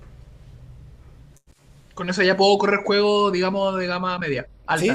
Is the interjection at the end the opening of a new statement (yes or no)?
yes